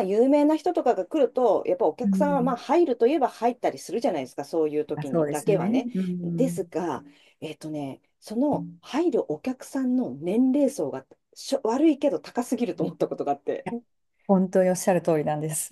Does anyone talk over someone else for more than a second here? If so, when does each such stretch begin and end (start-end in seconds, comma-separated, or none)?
5.0-6.6